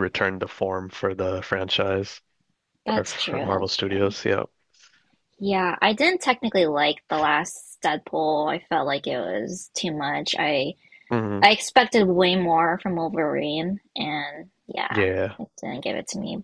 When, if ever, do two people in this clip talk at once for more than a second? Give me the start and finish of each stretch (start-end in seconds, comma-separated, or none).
3.0-4.2